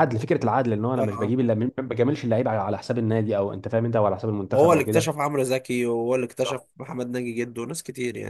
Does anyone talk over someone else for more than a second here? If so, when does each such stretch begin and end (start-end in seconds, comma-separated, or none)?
none